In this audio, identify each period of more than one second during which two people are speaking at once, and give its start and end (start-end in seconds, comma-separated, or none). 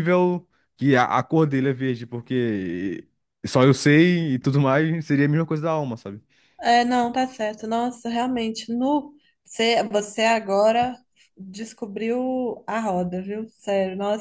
none